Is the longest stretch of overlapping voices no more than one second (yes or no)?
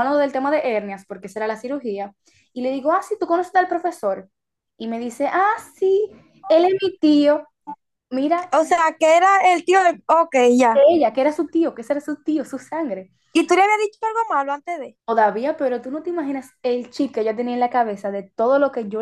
yes